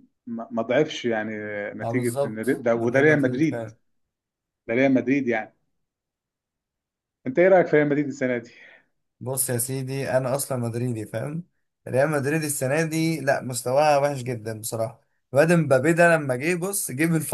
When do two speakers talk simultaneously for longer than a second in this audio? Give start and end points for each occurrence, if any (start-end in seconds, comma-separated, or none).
1.8-3.7